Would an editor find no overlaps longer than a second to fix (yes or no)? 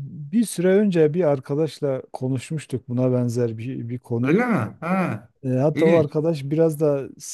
yes